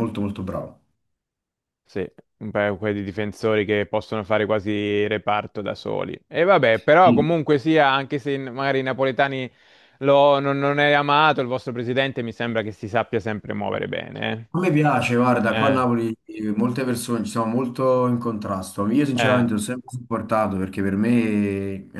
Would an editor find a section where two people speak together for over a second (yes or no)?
no